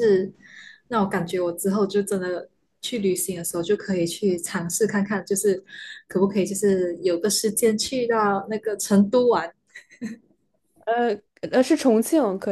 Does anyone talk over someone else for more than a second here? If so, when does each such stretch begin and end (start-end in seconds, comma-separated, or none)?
none